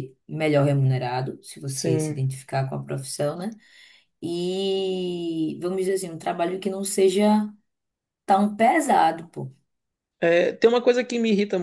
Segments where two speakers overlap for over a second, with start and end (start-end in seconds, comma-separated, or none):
none